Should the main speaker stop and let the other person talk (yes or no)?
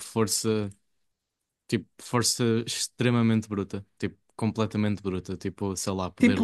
no